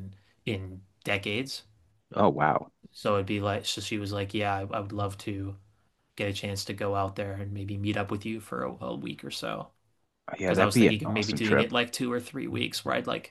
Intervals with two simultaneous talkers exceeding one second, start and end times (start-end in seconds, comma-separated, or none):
10.4-11.7